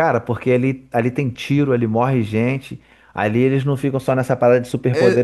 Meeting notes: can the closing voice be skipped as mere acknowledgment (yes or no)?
no